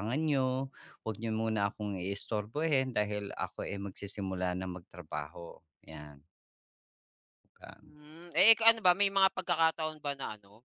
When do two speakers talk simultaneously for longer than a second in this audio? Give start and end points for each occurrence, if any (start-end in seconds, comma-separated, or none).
none